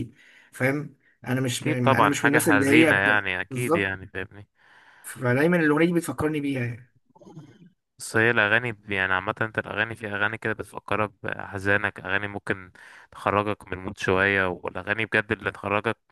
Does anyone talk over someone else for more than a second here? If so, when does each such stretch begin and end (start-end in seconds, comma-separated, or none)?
1.6-3.9